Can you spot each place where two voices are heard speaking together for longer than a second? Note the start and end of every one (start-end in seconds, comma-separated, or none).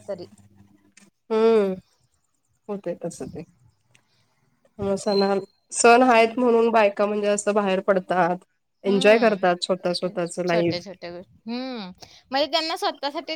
8.9-10.8